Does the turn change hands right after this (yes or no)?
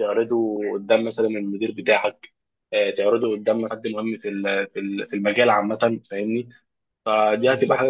no